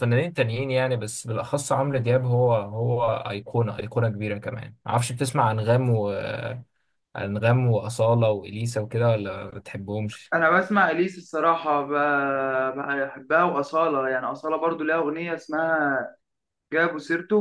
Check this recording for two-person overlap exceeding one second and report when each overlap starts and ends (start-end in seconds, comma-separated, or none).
none